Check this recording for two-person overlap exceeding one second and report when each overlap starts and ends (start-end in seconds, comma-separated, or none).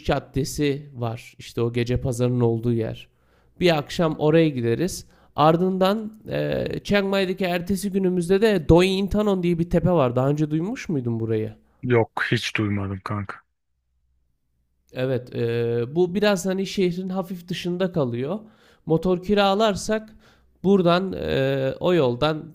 none